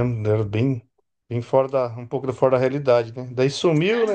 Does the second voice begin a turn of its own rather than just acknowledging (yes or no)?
no